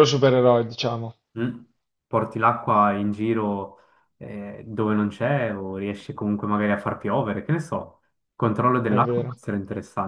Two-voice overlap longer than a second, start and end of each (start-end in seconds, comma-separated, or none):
none